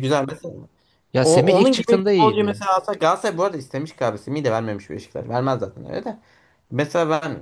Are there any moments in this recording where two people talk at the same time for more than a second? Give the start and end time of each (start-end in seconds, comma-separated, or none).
1.2-2.6